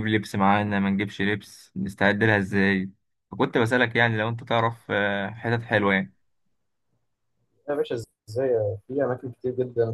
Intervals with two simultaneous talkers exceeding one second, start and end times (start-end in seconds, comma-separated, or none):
none